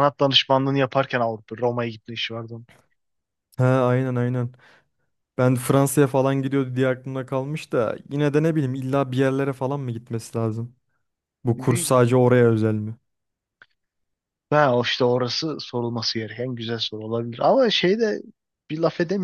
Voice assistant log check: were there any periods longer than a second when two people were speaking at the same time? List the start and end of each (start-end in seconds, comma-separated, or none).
none